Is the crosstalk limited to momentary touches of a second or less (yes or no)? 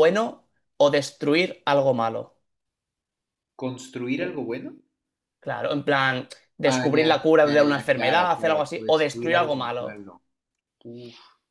no